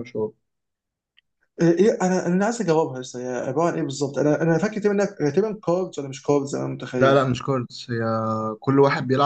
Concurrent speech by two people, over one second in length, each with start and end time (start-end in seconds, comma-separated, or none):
none